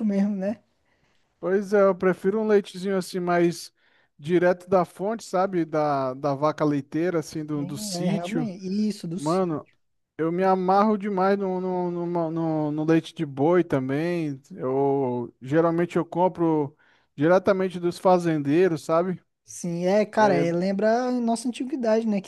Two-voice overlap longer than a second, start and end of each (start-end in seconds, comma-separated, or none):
none